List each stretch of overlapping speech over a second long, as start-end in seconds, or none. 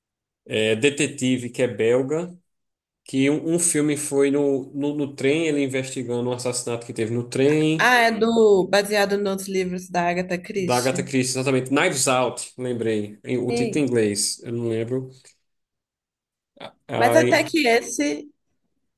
none